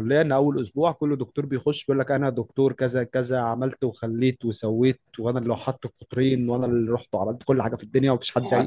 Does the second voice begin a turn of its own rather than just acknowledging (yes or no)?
yes